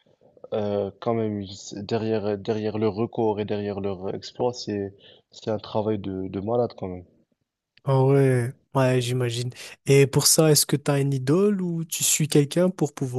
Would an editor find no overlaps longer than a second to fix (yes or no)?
yes